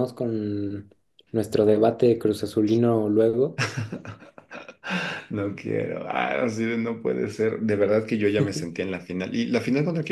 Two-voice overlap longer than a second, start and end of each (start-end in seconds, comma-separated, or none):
none